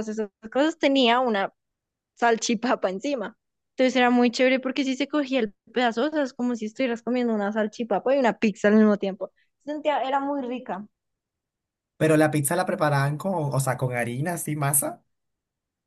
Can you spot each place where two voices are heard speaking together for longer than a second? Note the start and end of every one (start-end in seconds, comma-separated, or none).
none